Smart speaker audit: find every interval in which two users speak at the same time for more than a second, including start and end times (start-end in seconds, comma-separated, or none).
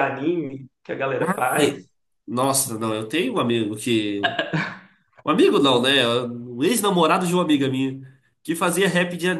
none